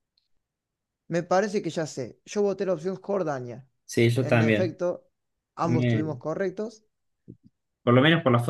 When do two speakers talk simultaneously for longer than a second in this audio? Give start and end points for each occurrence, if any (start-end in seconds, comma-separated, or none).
none